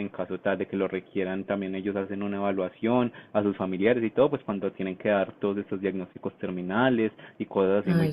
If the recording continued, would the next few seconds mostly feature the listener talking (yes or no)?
no